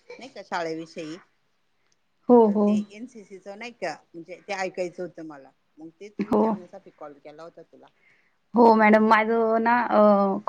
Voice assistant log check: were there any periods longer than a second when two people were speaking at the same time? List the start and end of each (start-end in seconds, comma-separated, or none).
none